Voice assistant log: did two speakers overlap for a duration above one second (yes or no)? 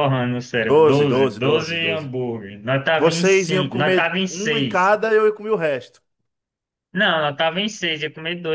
yes